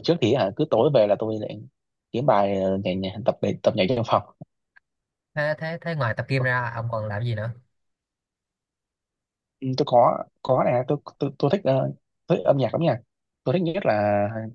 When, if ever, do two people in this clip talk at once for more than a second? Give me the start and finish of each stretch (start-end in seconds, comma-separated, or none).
none